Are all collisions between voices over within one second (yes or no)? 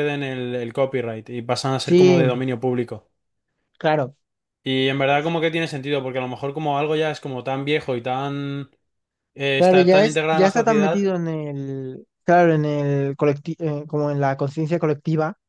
no